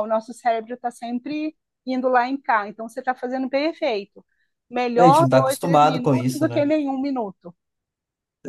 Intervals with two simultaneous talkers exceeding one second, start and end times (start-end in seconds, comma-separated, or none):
5.0-6.7